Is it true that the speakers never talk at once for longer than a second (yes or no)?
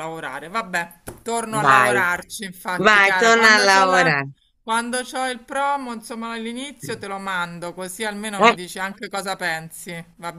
no